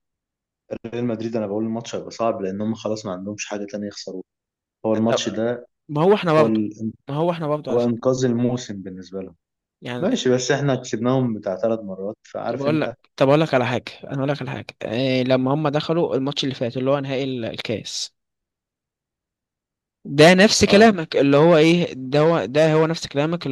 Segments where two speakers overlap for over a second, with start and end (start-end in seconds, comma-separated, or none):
none